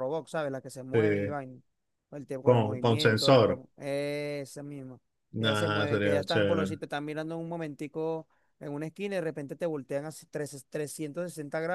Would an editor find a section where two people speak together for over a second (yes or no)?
yes